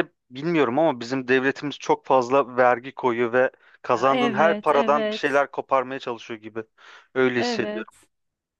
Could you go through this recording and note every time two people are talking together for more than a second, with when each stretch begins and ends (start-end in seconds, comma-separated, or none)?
3.9-5.4